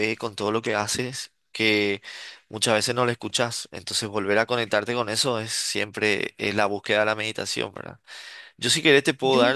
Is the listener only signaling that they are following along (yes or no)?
yes